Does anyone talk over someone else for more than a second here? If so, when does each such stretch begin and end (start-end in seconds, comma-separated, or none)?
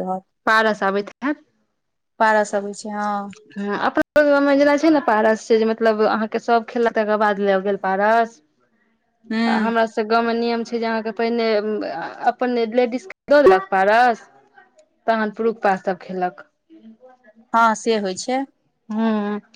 none